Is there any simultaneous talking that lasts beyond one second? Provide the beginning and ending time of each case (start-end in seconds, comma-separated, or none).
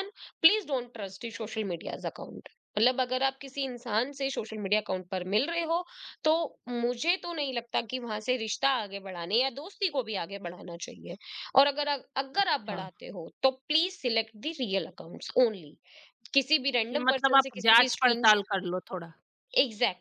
16.9-18.5